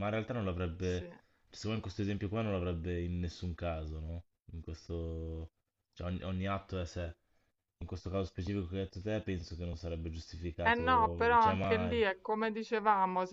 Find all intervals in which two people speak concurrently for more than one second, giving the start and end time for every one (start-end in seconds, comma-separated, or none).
10.6-12.0